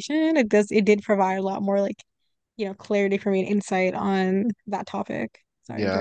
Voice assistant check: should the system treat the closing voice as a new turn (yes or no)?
yes